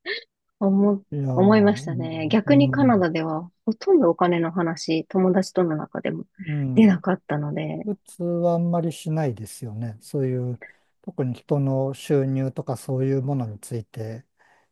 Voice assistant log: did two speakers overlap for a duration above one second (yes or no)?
yes